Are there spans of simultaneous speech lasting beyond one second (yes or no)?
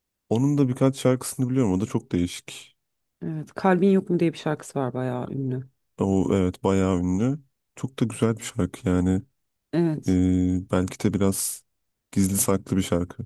no